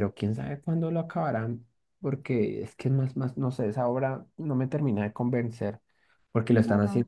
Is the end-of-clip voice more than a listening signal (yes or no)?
no